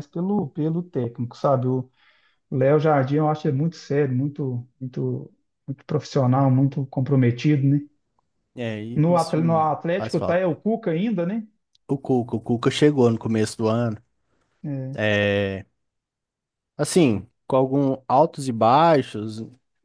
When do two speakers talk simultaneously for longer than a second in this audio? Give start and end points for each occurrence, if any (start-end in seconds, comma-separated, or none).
9.0-10.4